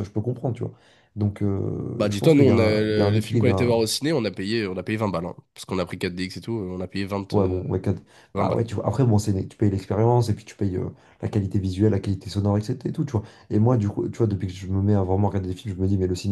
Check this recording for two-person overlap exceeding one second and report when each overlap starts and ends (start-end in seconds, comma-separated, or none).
2.0-3.8